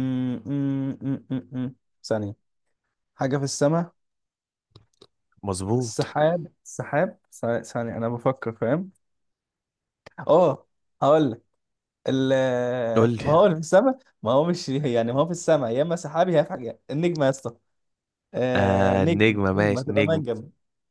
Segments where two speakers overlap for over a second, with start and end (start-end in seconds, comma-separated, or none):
18.6-20.2